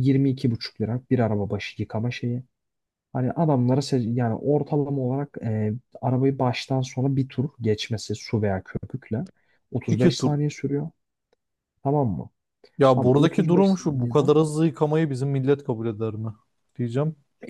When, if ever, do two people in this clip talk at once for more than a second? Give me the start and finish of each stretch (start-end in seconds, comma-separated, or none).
12.9-14.3